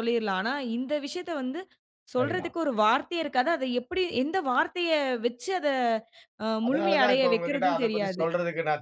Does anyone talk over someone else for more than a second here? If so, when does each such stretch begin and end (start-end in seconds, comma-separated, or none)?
6.7-8.2